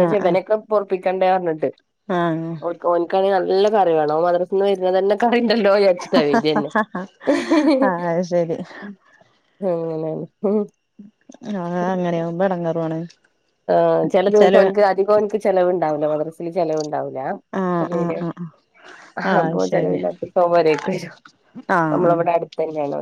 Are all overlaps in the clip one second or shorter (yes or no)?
yes